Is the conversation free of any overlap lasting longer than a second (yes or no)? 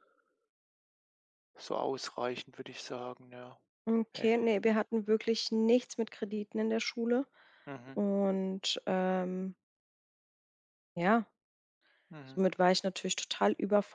yes